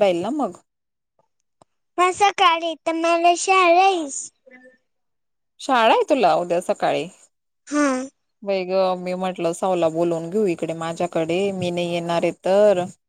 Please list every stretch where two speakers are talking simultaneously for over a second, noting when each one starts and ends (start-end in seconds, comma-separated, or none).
none